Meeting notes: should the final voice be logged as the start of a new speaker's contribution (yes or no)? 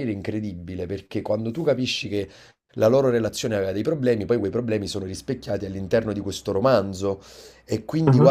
no